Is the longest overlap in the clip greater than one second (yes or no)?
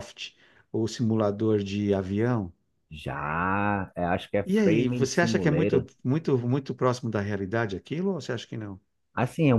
yes